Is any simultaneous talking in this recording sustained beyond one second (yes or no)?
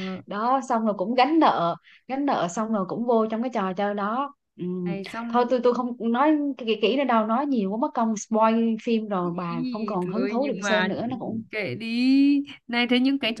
yes